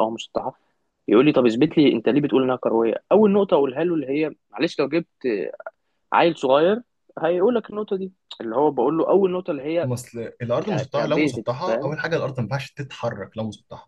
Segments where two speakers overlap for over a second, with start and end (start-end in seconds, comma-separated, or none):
10.6-11.9